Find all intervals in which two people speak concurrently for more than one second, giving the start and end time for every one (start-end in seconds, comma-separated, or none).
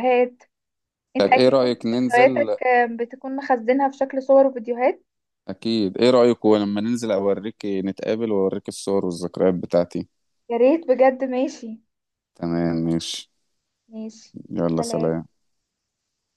1.2-2.6